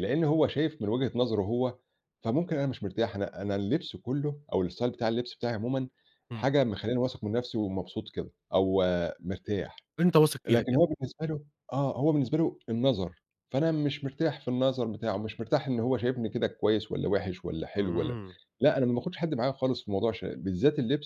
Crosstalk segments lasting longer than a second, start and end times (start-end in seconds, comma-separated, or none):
none